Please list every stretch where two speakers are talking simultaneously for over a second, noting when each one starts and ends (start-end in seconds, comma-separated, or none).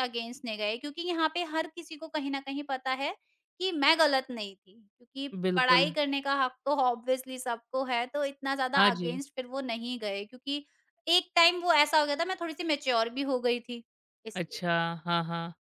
none